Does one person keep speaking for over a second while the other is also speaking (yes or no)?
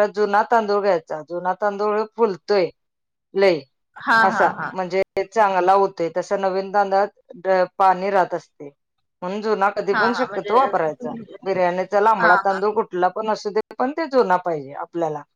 no